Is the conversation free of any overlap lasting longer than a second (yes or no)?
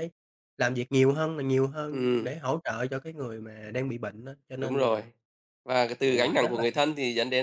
yes